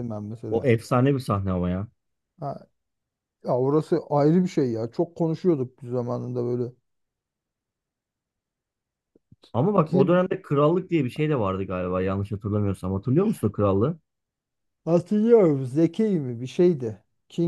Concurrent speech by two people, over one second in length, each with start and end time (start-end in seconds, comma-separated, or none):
none